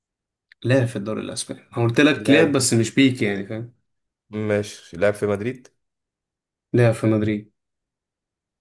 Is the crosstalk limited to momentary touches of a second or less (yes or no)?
yes